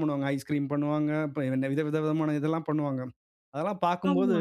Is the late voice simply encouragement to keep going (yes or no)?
yes